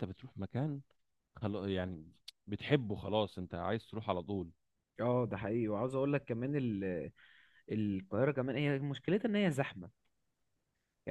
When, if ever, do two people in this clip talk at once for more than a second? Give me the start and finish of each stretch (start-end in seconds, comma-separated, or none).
none